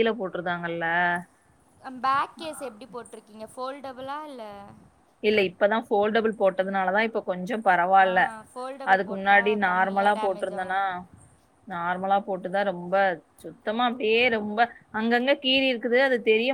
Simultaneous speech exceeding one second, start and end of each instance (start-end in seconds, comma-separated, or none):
8.9-10.8